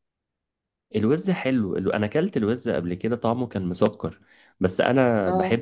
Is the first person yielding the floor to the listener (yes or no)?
no